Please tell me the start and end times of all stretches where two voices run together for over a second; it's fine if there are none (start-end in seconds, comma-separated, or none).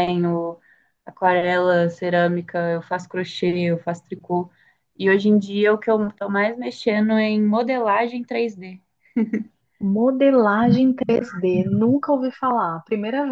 none